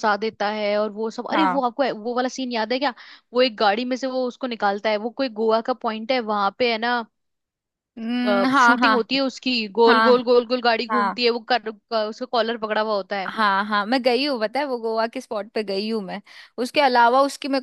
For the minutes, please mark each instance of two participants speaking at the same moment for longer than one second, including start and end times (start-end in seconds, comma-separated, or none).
none